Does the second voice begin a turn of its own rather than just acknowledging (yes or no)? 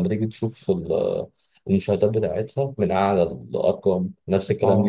yes